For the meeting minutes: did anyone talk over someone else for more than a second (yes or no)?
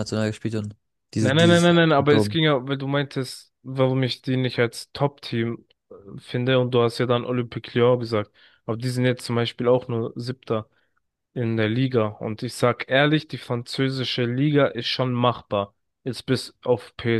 yes